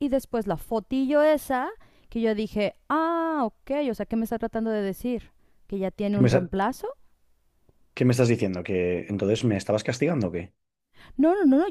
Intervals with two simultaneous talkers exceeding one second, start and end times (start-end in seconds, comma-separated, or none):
none